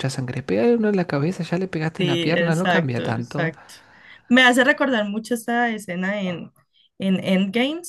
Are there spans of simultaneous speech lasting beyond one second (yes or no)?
yes